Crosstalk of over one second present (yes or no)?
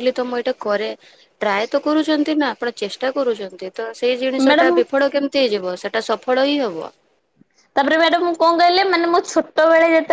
no